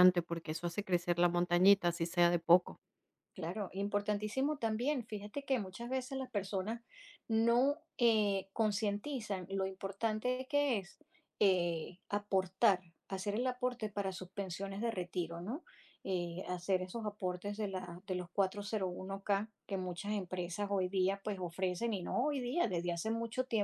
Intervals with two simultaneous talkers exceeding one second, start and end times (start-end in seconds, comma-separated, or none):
none